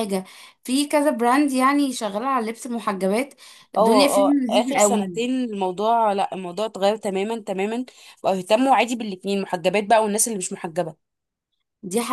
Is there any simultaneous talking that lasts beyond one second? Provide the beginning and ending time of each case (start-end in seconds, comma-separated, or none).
3.8-5.2